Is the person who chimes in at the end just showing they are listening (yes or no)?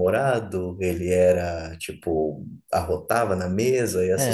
no